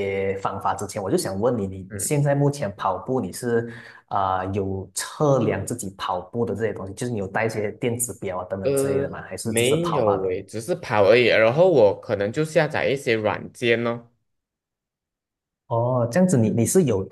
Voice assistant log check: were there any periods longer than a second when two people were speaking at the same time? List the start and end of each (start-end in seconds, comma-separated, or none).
8.6-10.4